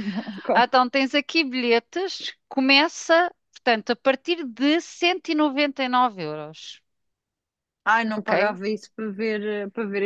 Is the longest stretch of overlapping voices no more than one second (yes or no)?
yes